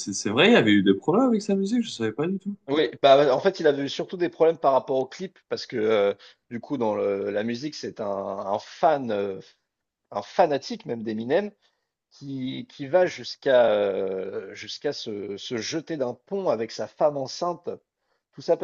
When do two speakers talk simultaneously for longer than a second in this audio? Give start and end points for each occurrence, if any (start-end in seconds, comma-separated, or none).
none